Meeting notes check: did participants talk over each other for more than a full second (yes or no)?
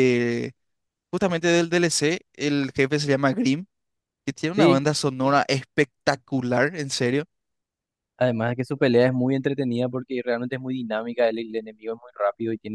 no